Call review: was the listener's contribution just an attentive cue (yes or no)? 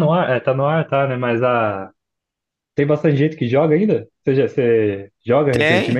no